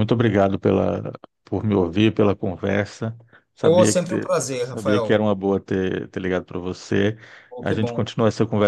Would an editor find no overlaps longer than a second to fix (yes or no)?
no